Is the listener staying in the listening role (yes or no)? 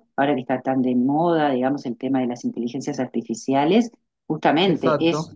yes